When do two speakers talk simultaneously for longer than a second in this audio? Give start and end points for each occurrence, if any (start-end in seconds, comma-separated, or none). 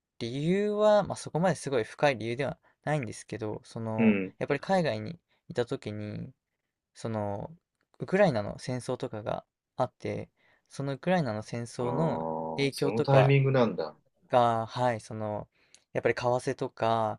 11.8-13.3